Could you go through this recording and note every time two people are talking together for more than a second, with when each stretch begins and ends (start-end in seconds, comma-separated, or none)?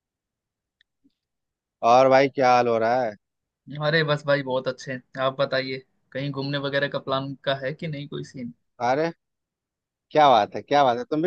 none